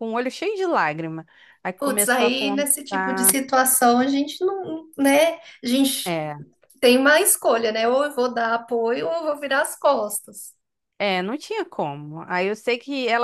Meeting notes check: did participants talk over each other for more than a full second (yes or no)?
yes